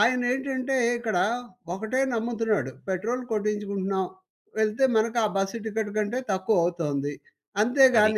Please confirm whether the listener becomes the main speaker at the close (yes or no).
no